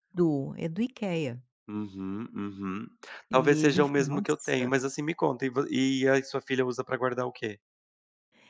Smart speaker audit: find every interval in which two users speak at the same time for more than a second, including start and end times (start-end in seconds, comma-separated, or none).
3.3-4.7